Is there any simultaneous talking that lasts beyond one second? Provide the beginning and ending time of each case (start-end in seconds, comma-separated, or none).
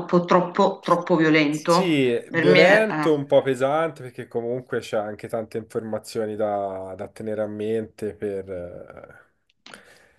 1.5-3.1